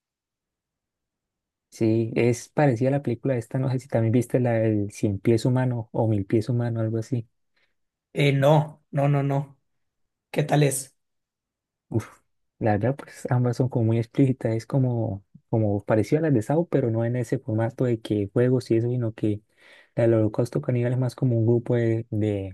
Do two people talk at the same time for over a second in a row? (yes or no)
no